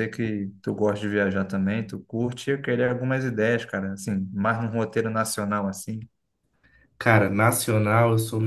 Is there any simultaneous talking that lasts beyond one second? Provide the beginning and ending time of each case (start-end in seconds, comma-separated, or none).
none